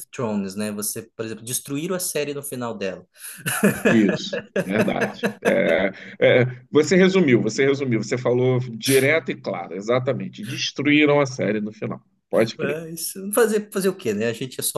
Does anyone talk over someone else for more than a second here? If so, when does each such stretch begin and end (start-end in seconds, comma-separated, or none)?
none